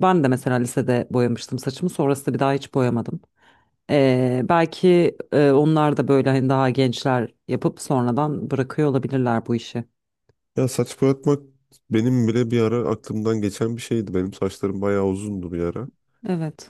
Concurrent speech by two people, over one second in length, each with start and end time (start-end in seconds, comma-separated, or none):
none